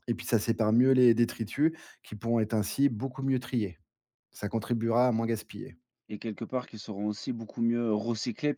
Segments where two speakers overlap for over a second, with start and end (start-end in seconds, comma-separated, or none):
none